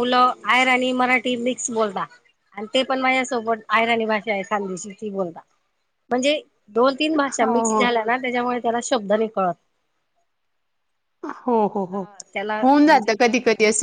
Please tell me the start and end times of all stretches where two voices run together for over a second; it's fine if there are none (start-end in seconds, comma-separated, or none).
none